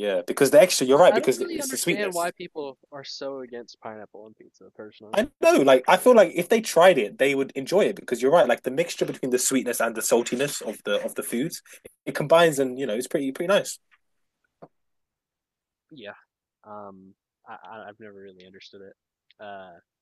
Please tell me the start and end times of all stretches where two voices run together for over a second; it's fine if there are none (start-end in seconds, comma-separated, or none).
0.9-2.3